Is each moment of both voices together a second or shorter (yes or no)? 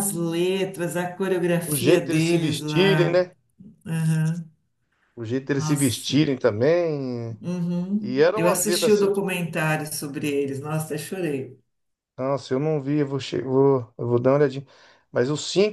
no